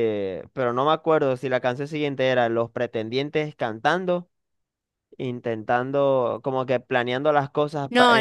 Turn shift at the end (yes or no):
yes